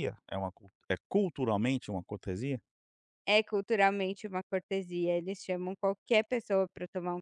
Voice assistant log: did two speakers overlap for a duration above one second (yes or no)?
no